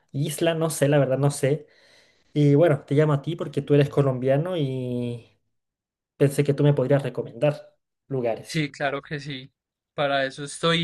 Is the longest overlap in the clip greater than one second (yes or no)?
no